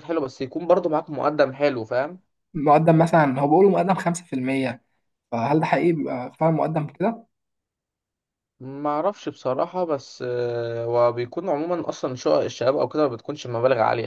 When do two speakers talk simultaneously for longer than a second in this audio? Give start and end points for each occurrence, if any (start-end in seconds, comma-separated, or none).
none